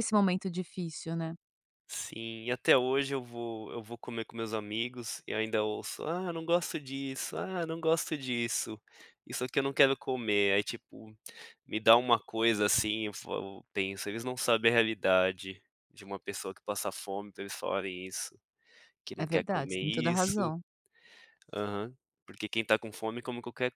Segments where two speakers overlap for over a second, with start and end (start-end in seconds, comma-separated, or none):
19.2-20.5